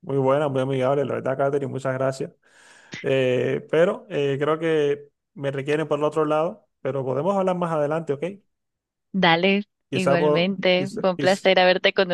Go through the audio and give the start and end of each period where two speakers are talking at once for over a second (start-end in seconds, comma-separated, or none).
9.9-11.5